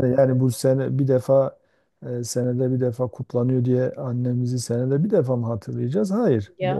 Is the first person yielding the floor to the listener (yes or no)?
no